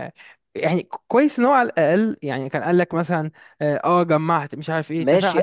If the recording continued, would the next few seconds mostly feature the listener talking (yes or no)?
yes